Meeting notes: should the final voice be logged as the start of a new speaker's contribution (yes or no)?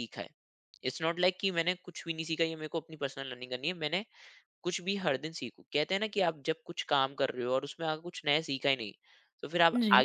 no